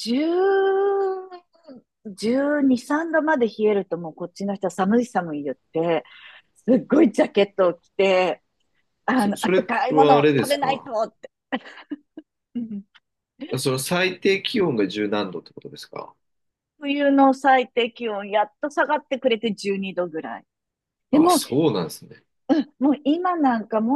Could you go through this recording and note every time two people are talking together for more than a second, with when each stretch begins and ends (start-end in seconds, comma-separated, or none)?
9.2-10.9